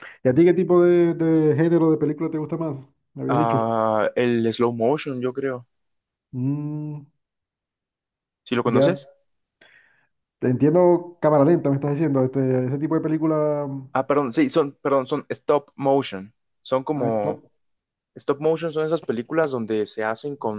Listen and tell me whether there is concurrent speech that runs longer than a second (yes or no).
no